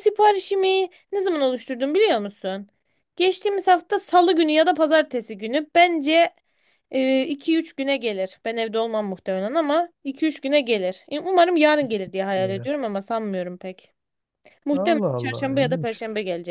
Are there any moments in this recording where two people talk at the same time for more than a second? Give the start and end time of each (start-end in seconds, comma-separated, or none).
14.7-16.0